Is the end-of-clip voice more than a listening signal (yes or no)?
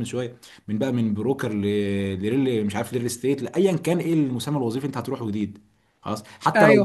yes